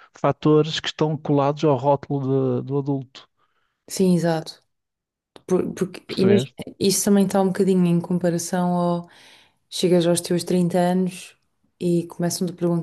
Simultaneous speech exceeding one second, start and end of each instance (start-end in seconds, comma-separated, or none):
none